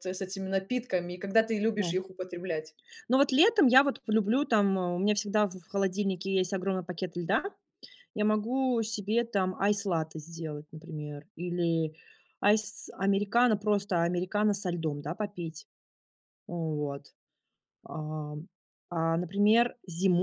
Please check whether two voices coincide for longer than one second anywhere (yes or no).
no